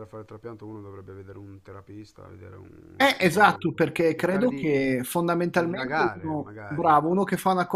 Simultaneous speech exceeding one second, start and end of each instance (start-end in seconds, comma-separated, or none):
3.0-4.7, 5.5-7.0